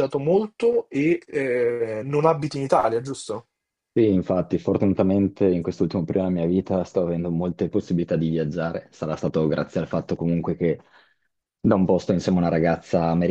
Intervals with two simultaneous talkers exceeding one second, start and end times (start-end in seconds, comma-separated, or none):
none